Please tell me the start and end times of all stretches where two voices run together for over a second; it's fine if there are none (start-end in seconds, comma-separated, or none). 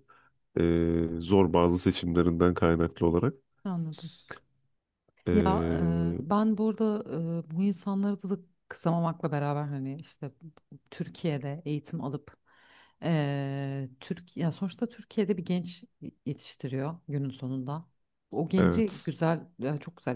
none